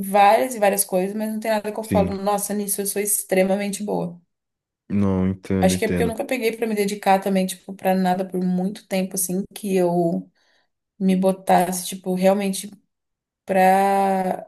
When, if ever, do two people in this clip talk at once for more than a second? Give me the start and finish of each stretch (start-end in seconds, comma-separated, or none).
none